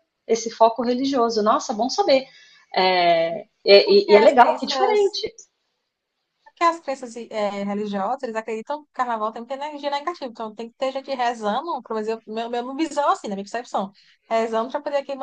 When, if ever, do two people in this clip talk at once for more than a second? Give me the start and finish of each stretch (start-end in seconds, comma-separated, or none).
3.8-5.2